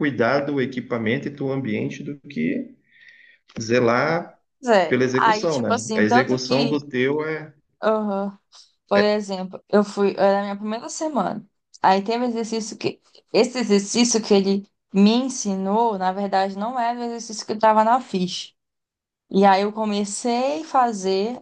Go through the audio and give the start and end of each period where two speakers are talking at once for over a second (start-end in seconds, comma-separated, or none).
4.9-6.7